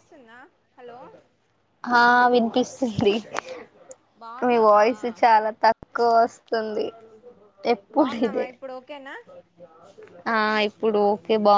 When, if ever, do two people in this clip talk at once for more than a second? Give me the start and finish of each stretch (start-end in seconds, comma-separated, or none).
none